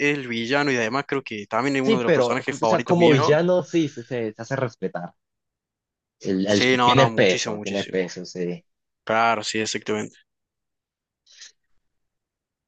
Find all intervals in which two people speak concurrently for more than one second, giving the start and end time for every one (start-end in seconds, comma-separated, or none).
1.8-3.3, 6.5-8.0